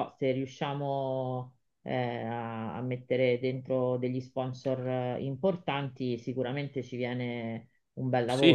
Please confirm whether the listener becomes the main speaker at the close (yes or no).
yes